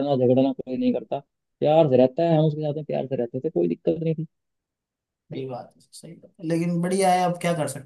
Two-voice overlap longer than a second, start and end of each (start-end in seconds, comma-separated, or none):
none